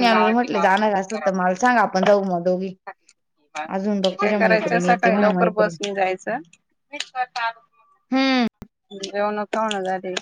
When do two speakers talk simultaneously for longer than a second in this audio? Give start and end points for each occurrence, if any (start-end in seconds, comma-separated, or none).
4.0-5.8